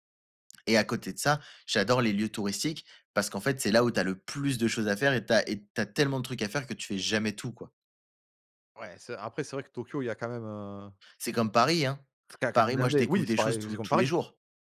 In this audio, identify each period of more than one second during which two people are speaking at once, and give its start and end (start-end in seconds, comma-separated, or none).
12.5-14.1